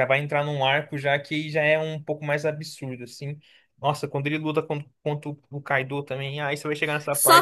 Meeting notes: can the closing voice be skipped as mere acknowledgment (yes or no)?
no